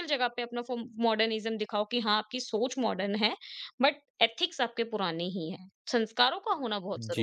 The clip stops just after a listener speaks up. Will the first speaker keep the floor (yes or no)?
no